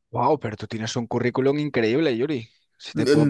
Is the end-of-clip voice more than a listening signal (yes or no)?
yes